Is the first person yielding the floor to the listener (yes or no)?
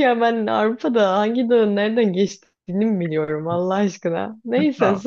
yes